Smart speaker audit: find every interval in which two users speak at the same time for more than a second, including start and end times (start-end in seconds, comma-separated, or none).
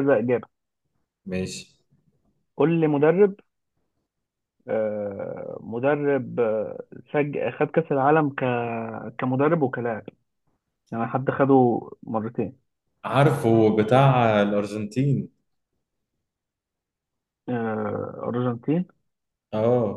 none